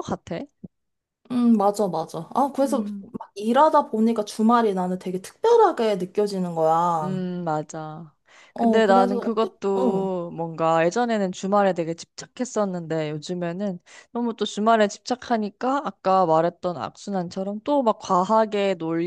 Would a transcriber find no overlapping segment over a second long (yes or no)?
no